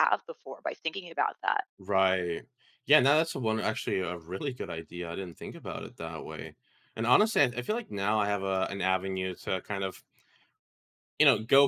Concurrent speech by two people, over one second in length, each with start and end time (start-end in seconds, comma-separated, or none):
none